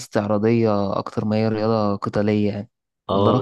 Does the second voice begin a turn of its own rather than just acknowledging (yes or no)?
yes